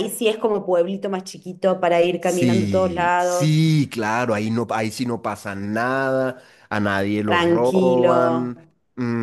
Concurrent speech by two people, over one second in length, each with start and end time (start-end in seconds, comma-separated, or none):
2.2-3.6, 7.2-8.5